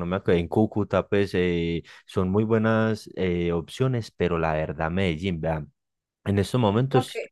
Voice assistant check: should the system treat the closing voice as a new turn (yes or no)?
no